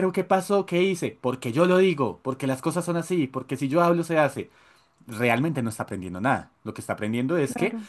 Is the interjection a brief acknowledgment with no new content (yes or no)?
yes